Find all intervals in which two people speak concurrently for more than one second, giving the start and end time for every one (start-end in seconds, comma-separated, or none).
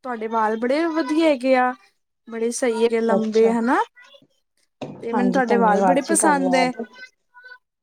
5.1-6.7